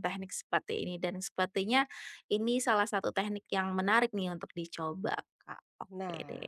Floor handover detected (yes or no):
yes